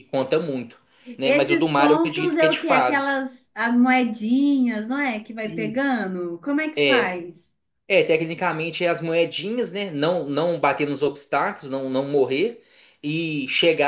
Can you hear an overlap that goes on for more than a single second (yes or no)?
yes